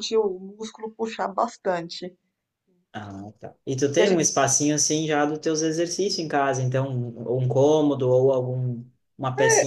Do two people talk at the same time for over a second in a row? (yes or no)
no